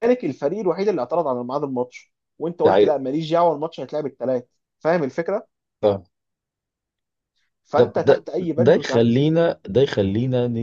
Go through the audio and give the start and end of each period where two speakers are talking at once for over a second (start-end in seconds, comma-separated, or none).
7.7-9.2